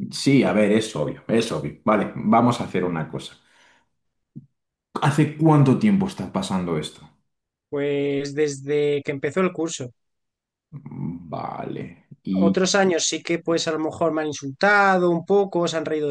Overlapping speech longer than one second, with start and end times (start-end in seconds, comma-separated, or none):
none